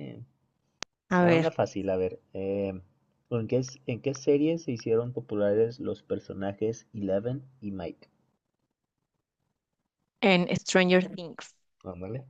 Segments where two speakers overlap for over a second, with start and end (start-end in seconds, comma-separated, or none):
none